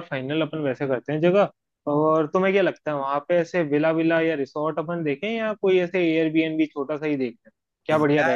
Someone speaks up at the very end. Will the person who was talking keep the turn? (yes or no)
no